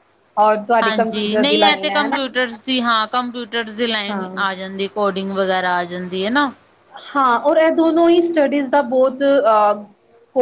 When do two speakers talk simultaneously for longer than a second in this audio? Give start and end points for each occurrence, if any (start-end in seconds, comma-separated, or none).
0.8-2.2